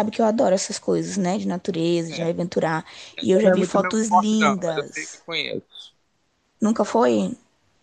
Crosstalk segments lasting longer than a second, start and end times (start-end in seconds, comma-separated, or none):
3.2-5.2